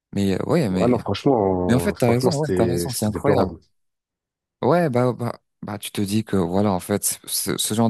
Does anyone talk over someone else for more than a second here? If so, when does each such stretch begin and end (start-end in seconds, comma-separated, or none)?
1.7-3.5